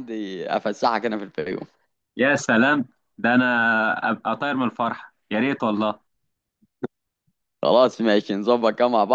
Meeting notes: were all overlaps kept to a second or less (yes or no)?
yes